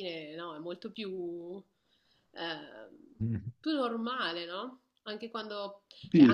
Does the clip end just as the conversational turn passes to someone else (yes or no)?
no